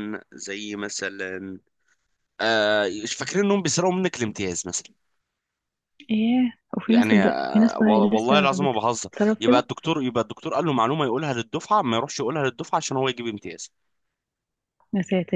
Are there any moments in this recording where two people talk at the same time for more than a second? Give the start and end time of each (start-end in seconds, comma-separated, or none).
6.9-9.7